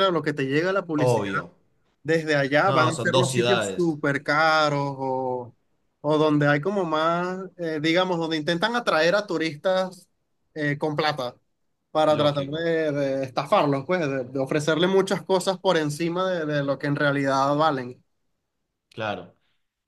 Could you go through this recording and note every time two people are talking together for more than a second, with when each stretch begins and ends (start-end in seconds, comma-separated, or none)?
2.6-4.0